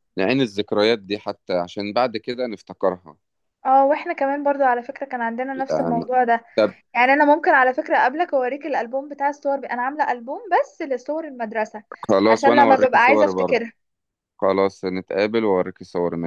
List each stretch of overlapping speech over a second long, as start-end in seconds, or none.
12.3-13.6